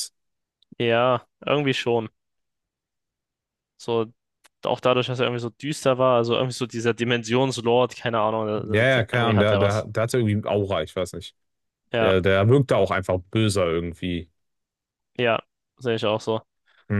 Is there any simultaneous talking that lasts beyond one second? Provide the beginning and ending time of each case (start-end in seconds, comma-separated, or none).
8.6-9.9